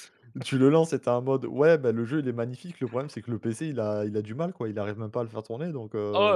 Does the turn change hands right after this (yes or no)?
yes